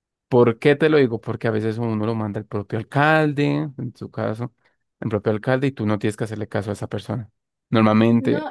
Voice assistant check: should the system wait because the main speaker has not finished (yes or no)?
no